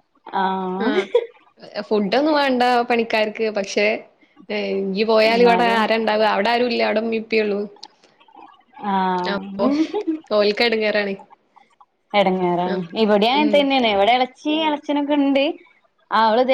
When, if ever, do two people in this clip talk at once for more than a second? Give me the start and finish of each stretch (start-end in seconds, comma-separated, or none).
none